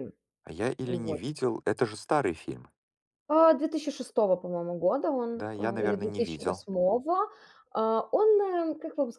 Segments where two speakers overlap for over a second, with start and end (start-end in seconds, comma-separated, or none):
5.4-6.7